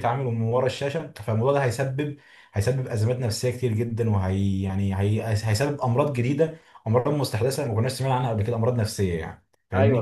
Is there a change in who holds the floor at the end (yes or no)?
yes